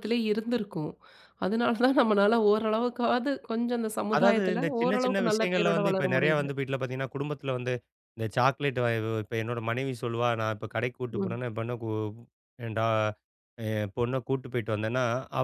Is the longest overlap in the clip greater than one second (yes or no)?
yes